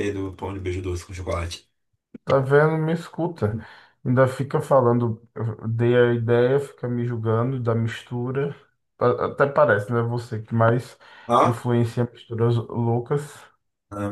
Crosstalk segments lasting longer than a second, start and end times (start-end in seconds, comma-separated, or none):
none